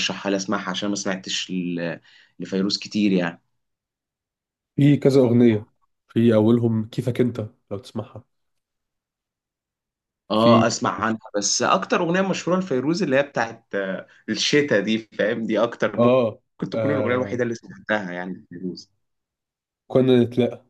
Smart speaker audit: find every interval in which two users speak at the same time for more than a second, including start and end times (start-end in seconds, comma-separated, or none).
16.0-17.4